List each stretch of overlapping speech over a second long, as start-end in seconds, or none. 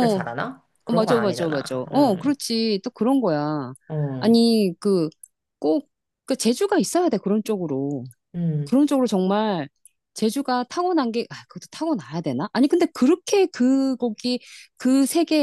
0.9-2.3